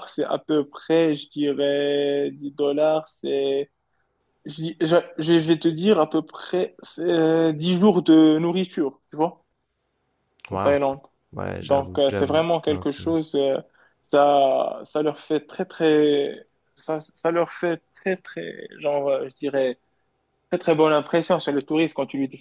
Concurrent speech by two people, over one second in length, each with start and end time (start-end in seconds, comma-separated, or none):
11.6-13.1